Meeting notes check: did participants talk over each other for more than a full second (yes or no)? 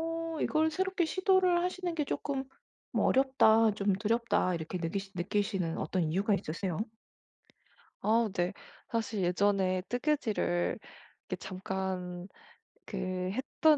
no